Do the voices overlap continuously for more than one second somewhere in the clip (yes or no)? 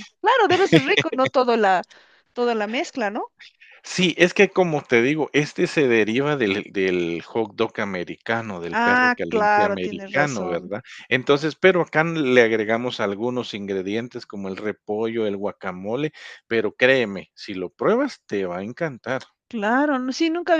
yes